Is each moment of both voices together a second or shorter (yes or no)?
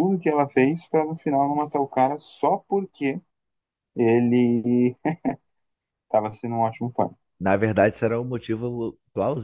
yes